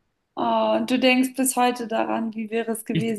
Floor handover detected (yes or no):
yes